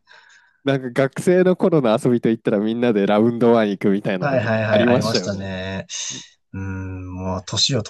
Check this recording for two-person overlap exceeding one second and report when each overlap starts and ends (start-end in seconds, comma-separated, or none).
4.2-5.5